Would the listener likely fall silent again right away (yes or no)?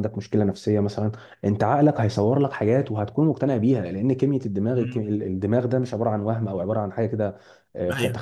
yes